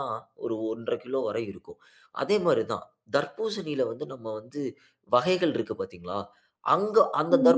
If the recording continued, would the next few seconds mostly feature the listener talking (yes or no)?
no